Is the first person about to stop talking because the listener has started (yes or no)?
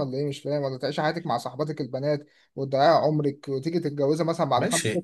yes